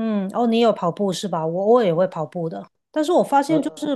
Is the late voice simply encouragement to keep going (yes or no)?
yes